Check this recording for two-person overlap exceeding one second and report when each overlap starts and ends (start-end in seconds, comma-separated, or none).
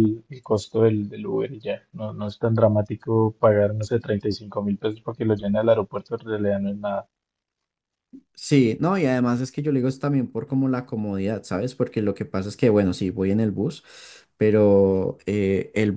none